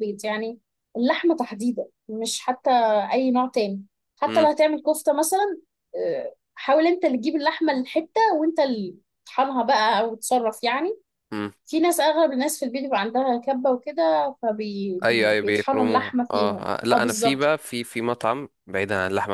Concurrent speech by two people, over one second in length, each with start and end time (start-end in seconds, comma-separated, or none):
15.1-17.5